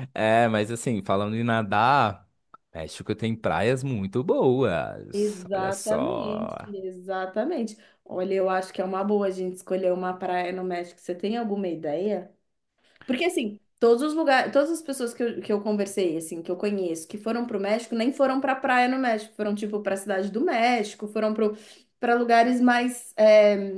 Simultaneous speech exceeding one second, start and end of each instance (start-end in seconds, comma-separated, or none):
5.1-6.6